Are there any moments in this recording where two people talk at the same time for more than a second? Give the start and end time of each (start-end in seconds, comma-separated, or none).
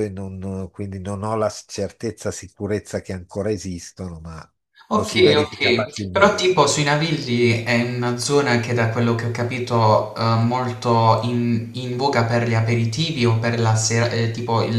4.9-6.4